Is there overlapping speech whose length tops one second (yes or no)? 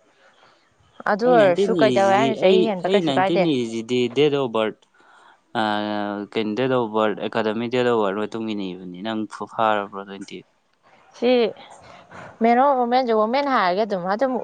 yes